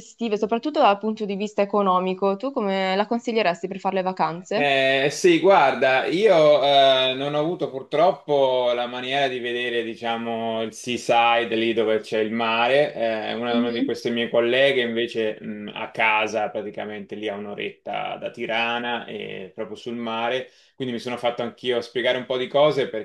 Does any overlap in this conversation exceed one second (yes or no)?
no